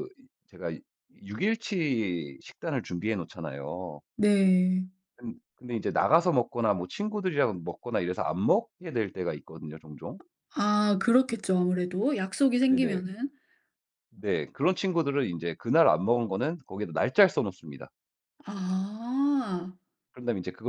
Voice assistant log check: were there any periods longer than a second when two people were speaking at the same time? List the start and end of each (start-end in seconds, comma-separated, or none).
none